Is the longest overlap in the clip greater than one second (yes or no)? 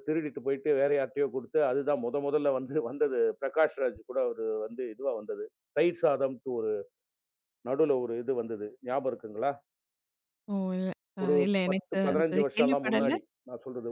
yes